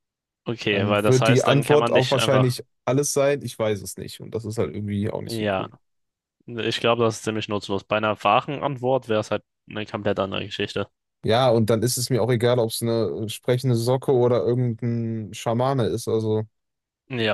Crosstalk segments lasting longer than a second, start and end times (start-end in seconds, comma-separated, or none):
0.7-2.6